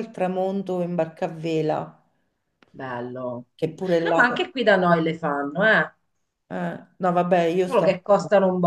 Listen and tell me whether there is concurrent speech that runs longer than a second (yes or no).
no